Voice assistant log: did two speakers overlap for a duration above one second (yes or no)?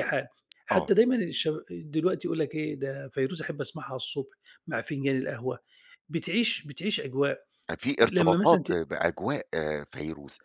no